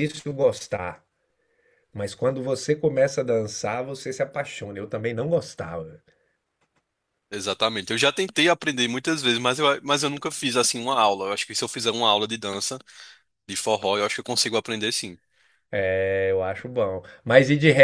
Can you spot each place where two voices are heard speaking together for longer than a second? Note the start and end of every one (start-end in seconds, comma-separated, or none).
none